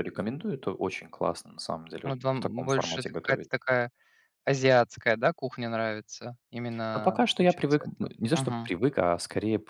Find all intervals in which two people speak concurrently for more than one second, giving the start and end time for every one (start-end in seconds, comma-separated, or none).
2.0-3.5, 6.9-8.7